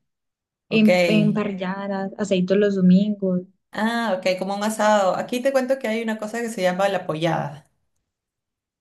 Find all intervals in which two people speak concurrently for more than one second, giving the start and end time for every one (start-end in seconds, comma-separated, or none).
none